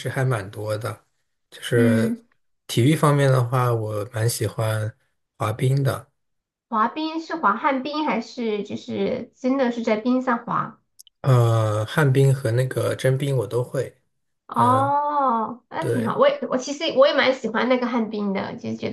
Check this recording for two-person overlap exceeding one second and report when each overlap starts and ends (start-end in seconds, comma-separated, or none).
none